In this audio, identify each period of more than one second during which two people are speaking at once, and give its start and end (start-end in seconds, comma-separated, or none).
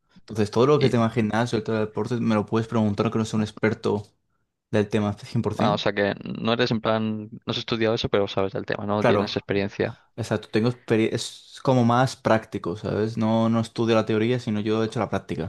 none